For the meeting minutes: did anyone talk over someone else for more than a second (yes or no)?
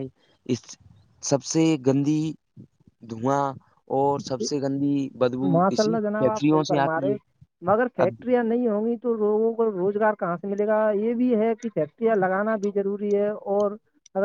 yes